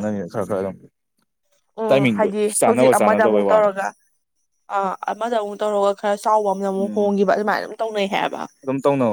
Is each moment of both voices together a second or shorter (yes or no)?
no